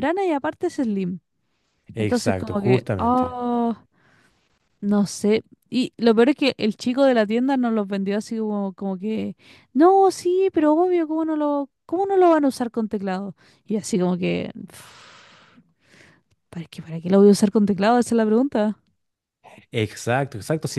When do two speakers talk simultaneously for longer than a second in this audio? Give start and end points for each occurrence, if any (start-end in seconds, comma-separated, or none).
2.0-3.4